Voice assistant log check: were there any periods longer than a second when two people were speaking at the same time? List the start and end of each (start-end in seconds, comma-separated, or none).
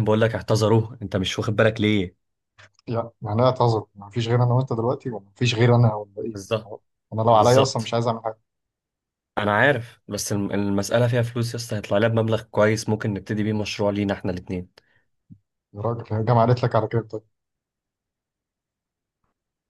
none